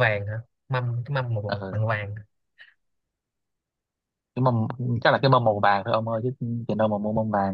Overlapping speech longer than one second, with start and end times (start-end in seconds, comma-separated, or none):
none